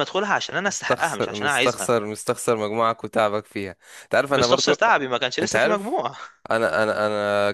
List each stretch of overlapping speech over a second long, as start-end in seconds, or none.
0.7-1.9